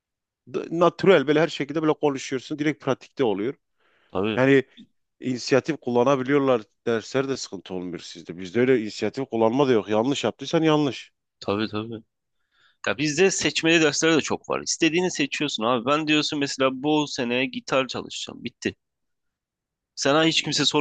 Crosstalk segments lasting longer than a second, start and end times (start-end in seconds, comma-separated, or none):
none